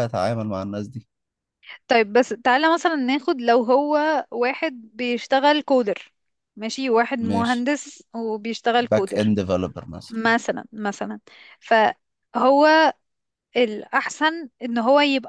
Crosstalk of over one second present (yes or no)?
no